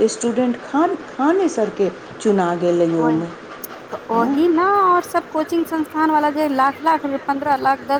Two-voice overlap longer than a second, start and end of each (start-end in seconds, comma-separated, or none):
none